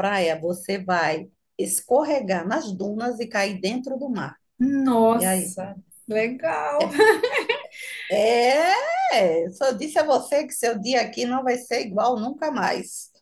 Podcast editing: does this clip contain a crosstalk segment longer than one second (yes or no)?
no